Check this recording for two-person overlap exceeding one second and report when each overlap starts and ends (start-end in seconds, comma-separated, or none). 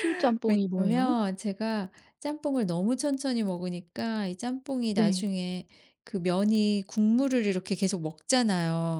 none